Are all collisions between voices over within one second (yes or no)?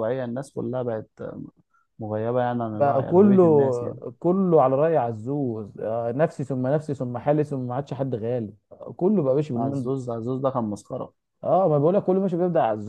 no